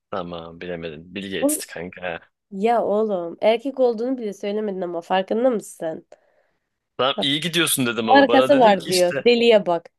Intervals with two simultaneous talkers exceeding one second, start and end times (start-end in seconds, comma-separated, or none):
8.0-9.3